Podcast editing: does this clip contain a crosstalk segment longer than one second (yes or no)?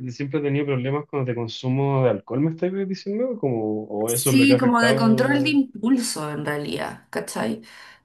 yes